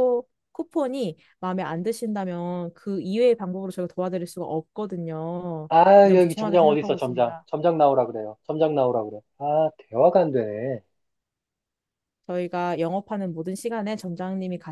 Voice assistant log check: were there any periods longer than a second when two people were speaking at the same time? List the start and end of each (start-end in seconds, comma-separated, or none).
5.7-7.5